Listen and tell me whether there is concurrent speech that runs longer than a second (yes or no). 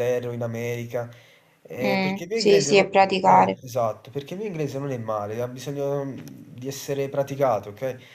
yes